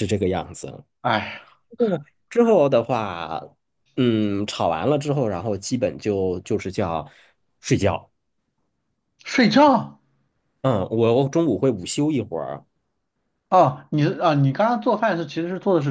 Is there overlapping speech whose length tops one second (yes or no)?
no